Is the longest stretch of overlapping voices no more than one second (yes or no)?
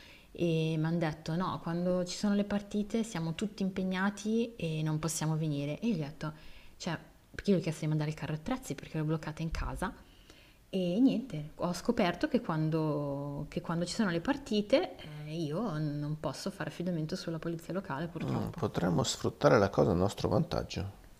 yes